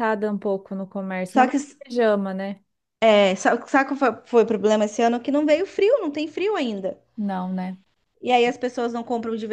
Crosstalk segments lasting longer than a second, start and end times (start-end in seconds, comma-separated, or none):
none